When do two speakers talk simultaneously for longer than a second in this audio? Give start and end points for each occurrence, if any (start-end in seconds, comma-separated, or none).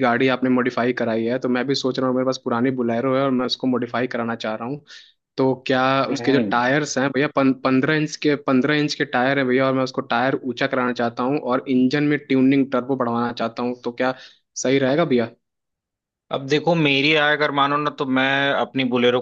none